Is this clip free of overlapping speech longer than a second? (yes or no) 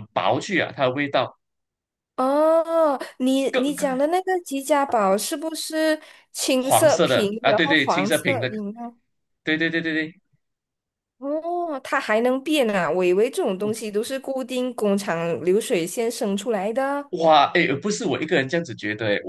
no